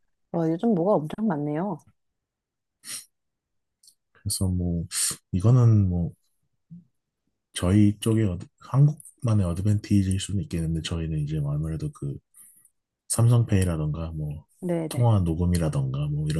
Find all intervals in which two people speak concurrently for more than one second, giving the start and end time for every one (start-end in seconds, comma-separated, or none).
none